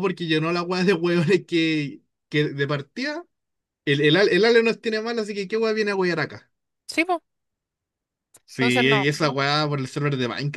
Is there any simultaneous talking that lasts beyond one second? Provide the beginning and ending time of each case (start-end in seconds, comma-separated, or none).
8.6-9.8